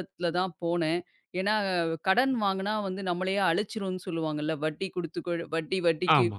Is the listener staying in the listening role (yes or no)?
no